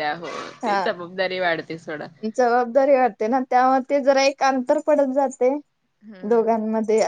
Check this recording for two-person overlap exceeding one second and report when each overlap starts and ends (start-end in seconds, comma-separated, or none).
none